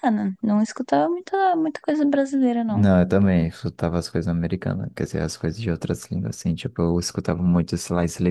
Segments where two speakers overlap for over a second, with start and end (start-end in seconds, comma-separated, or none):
none